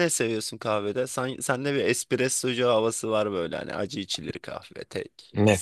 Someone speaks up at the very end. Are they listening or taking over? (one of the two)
taking over